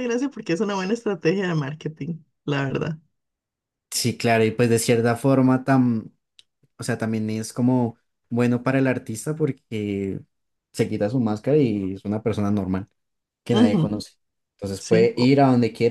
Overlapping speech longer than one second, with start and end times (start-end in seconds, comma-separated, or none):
none